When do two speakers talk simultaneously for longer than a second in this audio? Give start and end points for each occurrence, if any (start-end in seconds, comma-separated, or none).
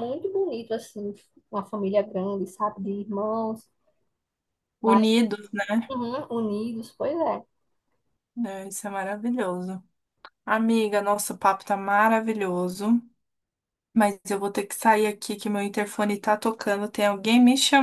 none